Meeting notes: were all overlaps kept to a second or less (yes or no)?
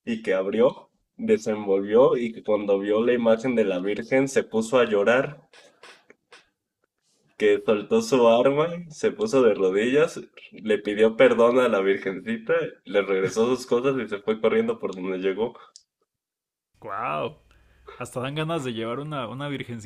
yes